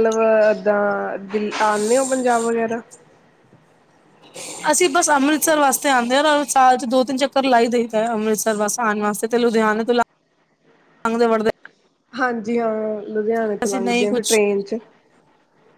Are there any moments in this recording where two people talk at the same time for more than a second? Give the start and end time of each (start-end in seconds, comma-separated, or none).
none